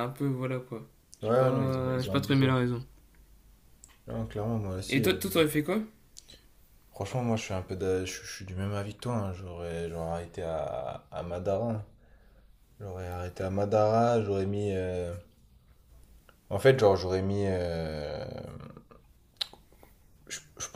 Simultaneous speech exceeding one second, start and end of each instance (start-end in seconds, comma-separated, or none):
1.2-2.5